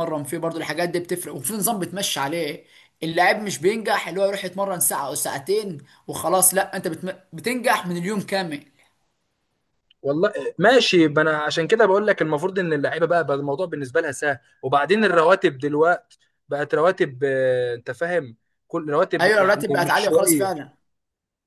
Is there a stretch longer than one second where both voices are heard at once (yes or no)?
yes